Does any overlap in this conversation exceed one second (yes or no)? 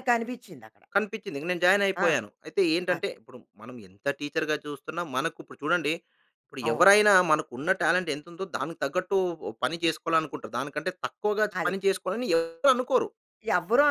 no